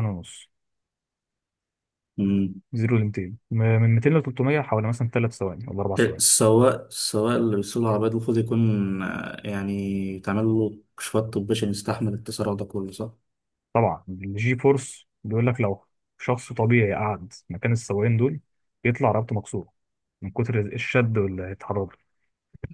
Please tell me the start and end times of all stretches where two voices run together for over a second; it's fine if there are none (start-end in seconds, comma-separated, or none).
none